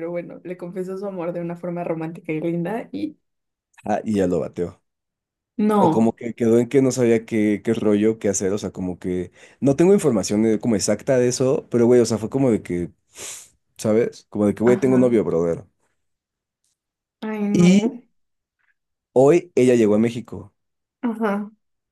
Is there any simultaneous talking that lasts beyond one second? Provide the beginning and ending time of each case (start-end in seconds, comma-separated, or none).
none